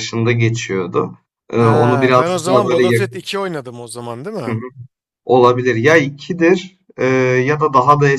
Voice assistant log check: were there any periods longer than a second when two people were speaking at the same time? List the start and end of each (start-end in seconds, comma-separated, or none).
1.5-3.3